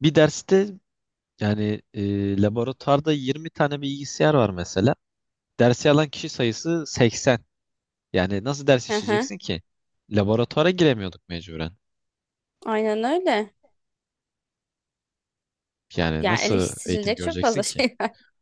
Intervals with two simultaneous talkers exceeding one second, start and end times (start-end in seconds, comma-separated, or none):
16.2-17.8